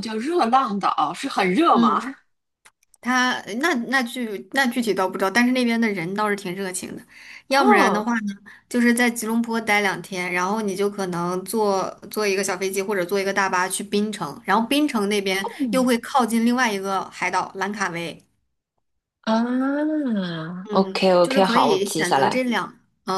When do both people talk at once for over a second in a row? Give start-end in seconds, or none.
20.7-22.4